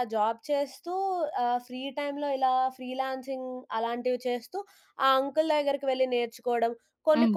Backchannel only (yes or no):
yes